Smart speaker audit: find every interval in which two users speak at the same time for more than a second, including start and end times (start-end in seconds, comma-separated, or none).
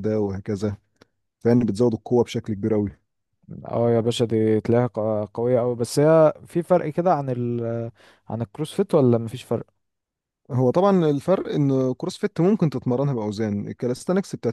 none